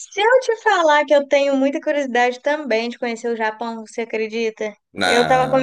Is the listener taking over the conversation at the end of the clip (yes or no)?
no